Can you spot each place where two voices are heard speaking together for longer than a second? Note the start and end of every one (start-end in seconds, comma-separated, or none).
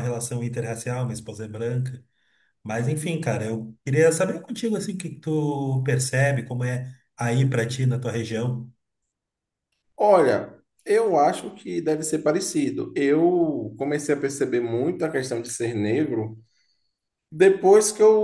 none